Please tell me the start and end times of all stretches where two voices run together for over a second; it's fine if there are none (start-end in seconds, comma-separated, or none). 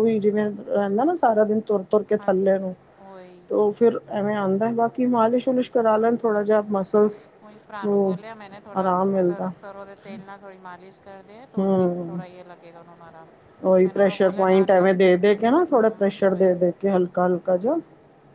none